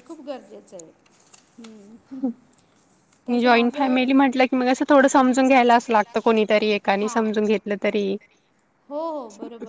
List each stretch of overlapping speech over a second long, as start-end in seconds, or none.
none